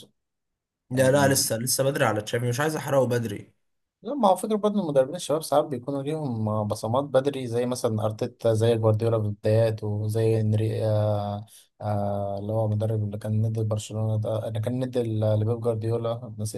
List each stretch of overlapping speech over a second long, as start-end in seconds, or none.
none